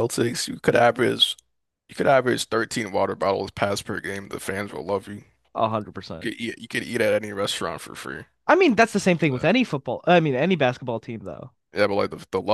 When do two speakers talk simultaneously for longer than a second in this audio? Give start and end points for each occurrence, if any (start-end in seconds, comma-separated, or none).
none